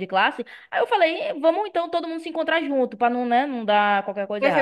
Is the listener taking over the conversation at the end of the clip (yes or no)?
yes